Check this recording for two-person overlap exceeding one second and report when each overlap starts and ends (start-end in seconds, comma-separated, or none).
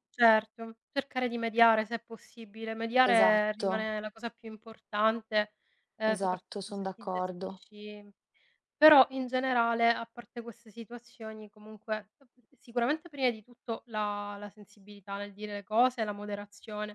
6.1-7.6